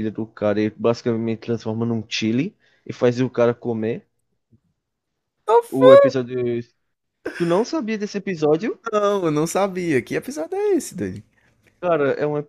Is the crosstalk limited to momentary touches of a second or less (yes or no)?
yes